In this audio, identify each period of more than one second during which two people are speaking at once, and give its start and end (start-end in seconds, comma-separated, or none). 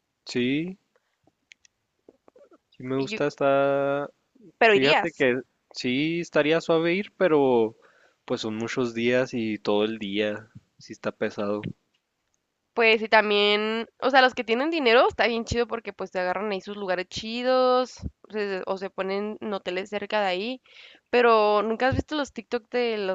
none